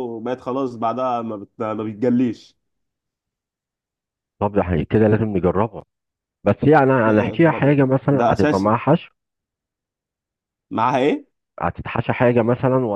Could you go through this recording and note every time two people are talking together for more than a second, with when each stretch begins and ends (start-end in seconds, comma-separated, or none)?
7.0-8.8